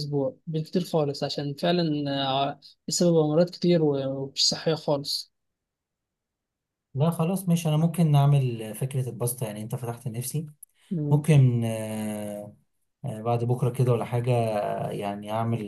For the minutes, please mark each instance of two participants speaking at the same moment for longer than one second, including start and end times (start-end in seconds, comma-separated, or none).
none